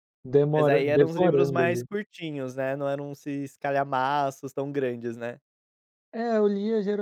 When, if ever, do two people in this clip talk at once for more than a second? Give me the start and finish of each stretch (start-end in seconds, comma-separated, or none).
0.5-1.8